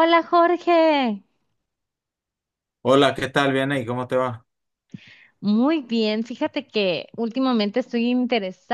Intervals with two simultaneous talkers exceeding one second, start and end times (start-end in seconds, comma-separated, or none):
none